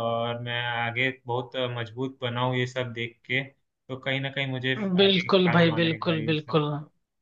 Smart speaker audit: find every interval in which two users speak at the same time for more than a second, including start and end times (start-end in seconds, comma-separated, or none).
5.0-6.6